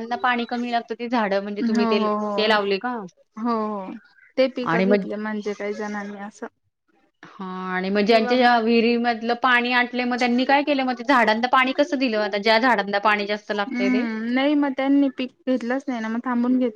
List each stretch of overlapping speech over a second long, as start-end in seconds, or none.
none